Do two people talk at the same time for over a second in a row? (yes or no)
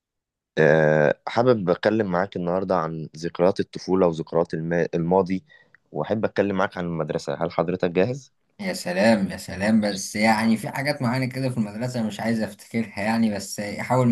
no